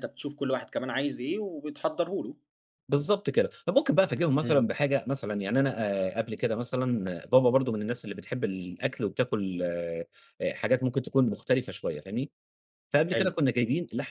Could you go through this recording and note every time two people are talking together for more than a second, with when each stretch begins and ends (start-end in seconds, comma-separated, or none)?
none